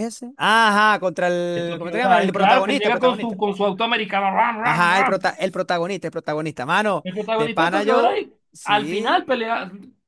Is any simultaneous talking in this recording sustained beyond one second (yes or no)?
yes